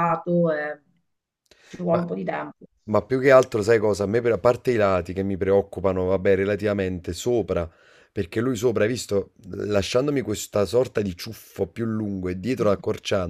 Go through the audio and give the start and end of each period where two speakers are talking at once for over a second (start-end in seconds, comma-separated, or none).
none